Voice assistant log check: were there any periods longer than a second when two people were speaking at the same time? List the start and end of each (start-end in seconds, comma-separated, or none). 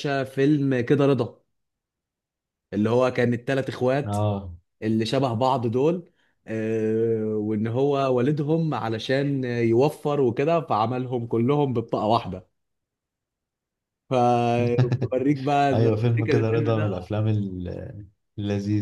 15.7-17.1